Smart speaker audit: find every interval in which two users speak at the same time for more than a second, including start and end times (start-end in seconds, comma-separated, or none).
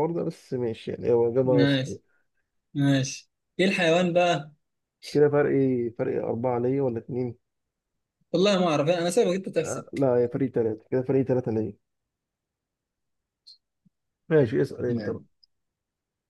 none